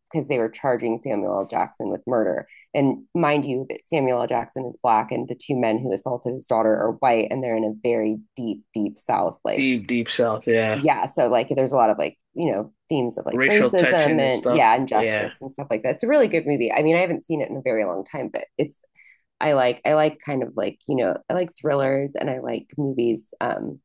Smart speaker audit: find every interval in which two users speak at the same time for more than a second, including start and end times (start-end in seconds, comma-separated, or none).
13.3-15.3